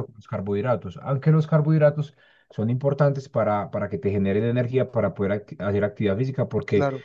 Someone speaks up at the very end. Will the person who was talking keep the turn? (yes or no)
yes